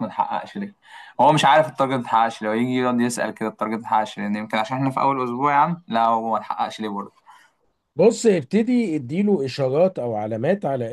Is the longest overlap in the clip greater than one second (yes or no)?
no